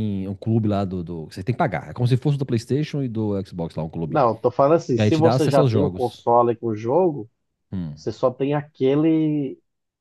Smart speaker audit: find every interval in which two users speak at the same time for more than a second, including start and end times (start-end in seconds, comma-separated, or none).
5.0-6.2